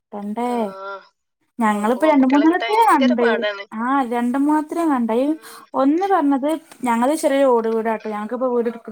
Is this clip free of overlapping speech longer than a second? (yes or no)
no